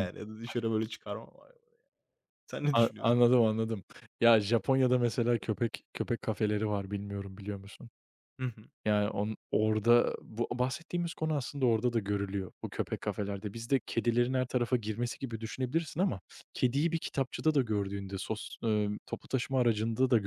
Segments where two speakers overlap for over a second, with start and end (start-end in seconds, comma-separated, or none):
none